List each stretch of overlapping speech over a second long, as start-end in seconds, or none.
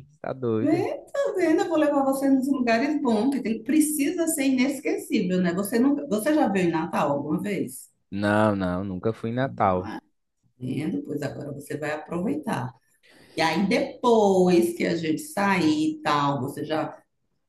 none